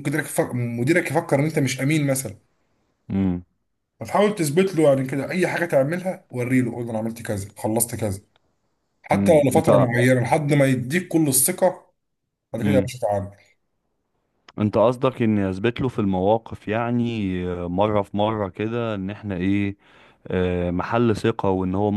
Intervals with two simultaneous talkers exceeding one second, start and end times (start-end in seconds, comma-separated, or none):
none